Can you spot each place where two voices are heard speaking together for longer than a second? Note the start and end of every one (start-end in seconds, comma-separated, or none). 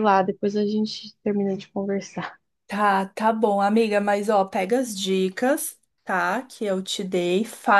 none